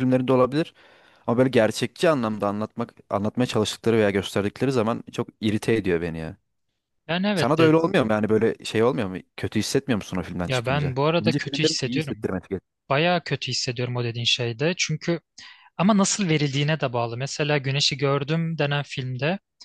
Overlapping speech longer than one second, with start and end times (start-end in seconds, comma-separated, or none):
10.5-12.3